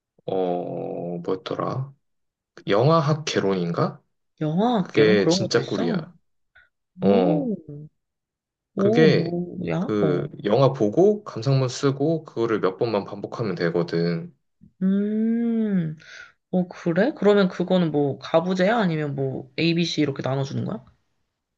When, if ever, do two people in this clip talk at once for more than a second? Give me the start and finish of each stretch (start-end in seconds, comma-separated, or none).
4.8-6.0